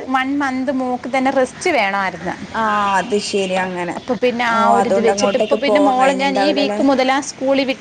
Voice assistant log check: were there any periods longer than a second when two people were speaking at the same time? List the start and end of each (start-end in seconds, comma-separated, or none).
4.6-6.8